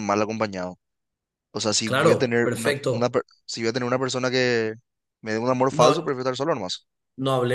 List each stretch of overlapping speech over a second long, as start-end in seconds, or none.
1.8-3.2